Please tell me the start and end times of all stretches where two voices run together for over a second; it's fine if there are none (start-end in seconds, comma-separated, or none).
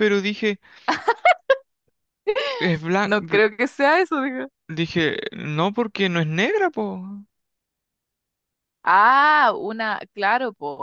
none